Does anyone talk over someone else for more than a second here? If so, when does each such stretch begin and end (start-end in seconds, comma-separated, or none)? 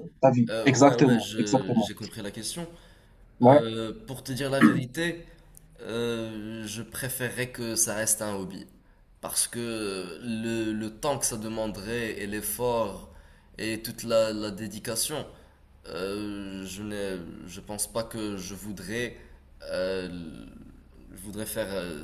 0.5-1.9